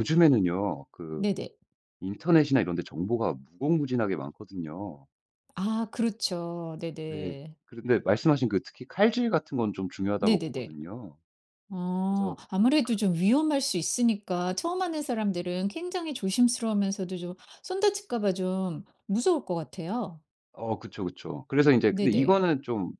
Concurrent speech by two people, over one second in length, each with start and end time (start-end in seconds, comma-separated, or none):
none